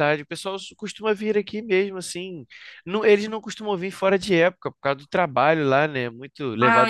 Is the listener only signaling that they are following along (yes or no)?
yes